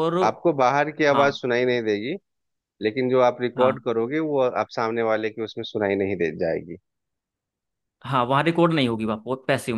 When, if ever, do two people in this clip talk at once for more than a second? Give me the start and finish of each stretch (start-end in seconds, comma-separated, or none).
none